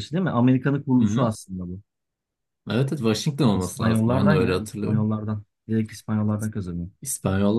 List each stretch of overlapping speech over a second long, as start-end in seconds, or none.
3.5-5.1